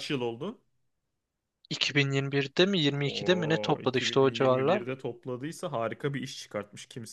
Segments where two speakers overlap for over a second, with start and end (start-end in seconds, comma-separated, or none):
3.0-4.8